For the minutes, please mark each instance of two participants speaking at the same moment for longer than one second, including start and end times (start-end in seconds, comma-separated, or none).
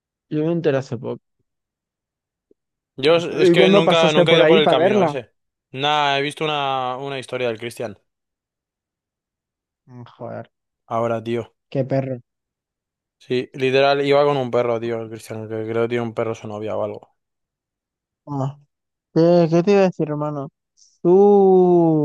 3.5-5.1